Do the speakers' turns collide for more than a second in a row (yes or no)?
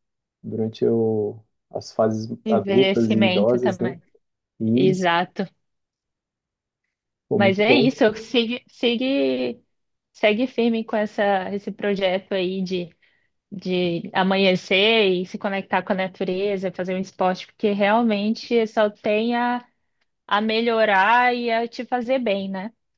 yes